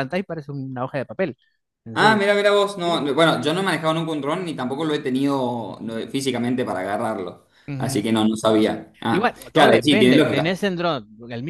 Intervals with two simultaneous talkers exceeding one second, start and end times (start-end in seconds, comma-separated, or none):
9.1-10.6